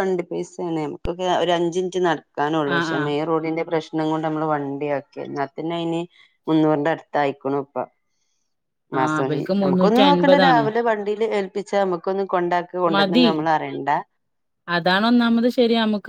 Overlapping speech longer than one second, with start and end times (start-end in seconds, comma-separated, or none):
9.1-10.6